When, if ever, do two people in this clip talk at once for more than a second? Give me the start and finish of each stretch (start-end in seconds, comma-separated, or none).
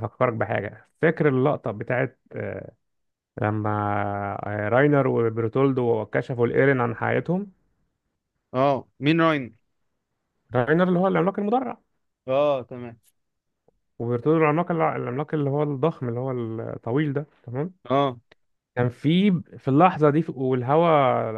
none